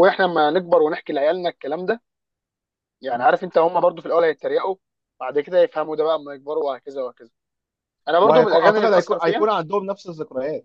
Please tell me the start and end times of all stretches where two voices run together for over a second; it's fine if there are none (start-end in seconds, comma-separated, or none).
8.2-9.5